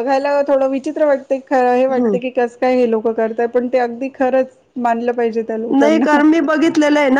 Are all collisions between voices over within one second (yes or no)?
yes